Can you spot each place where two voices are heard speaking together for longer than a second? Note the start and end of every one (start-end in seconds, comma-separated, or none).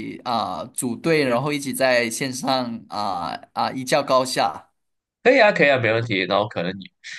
none